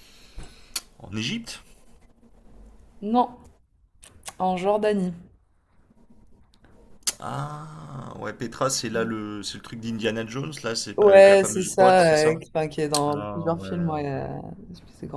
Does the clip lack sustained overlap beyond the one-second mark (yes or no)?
no